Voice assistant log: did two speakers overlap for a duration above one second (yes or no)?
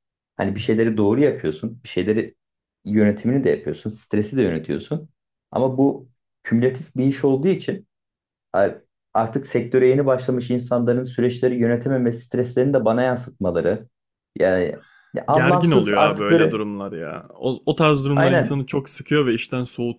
yes